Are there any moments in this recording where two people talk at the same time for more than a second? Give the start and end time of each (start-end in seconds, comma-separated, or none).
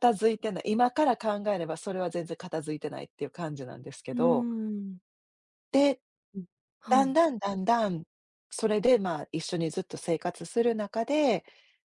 none